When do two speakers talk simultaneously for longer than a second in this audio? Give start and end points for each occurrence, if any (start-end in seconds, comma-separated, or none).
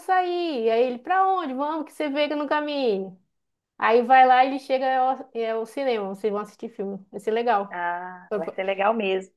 none